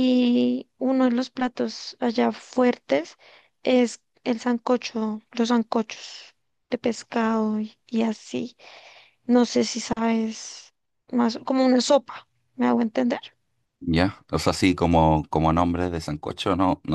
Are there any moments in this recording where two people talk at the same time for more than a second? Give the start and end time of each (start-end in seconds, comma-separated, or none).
none